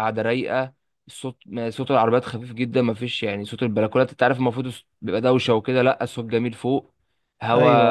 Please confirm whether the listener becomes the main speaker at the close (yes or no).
no